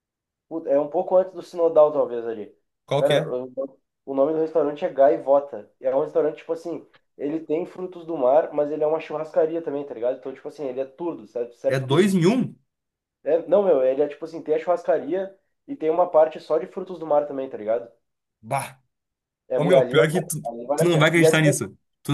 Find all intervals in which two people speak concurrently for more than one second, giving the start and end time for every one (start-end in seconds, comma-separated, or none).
19.6-21.5